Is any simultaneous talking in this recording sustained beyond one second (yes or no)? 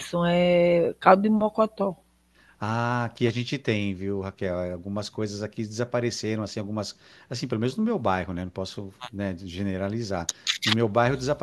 no